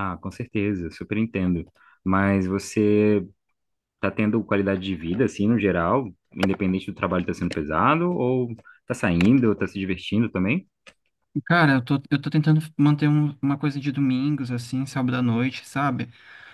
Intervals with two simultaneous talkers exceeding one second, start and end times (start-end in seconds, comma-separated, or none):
none